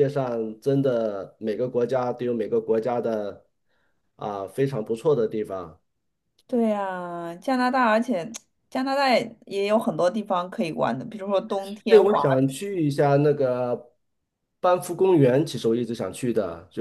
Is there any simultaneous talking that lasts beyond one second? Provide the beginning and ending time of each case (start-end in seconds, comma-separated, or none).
none